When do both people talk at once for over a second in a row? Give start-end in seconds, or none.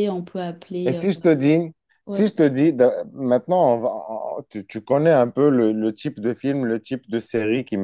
none